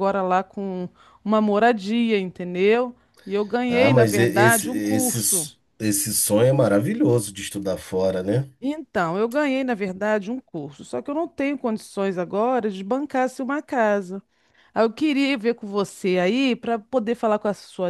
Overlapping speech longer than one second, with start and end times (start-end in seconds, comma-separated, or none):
3.7-5.5